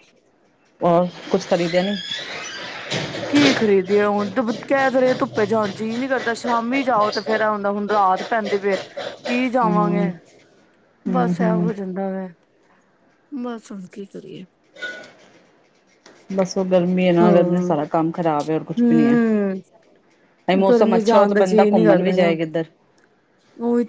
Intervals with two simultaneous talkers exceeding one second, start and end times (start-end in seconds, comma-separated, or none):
20.7-22.4